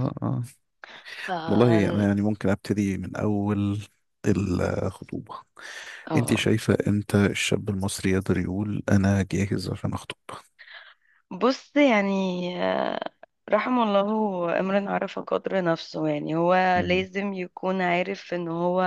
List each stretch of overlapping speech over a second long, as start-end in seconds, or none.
none